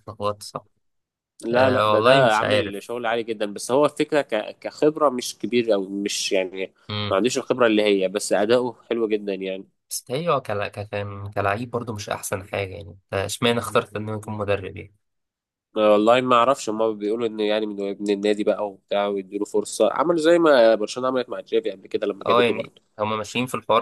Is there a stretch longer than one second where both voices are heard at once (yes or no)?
yes